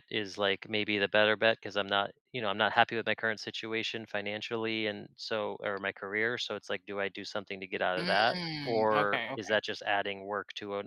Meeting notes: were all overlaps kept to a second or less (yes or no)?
no